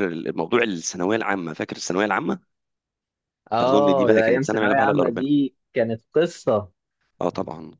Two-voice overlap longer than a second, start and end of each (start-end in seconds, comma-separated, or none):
3.6-5.2